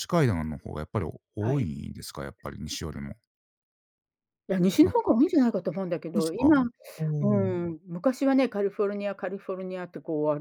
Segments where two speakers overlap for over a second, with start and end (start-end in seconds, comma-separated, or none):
none